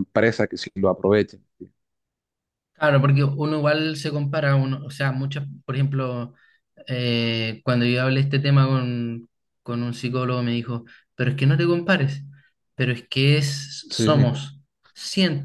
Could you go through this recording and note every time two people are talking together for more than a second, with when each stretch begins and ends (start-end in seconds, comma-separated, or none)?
none